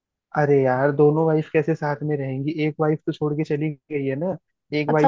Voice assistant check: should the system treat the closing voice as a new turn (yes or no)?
yes